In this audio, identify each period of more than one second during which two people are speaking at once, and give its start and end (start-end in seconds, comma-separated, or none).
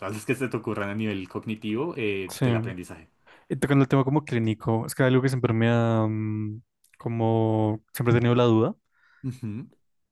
none